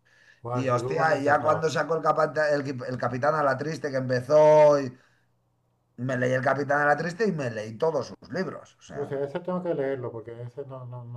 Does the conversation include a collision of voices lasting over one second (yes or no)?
yes